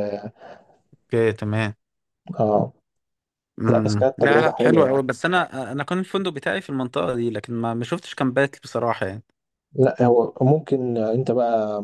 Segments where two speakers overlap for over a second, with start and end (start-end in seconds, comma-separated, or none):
3.7-5.0